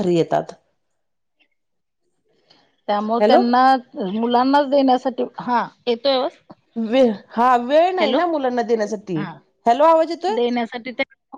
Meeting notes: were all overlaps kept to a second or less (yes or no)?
yes